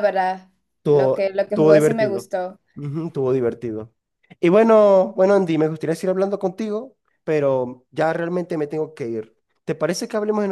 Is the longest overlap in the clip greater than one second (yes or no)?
yes